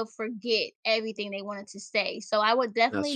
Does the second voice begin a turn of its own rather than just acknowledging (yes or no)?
no